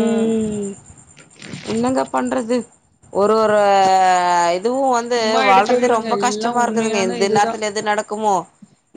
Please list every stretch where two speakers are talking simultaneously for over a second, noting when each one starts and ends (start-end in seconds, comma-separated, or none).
5.2-7.6